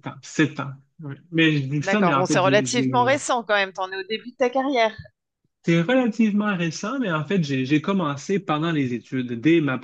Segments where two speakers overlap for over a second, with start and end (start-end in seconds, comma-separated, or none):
1.8-3.2